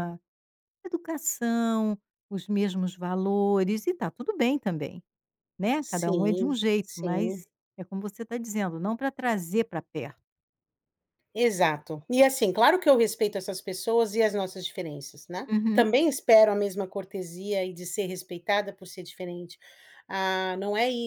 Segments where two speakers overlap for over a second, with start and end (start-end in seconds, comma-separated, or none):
5.8-7.5